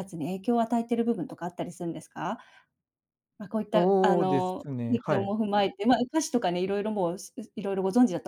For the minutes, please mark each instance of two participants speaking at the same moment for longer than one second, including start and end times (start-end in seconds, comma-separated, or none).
3.7-5.3